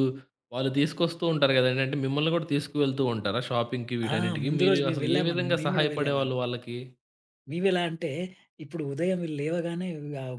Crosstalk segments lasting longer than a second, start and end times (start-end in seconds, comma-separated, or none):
4.2-6.3